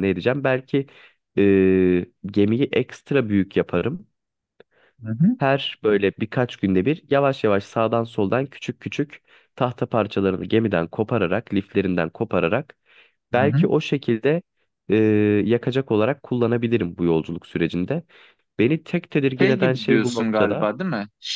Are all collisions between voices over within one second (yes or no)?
no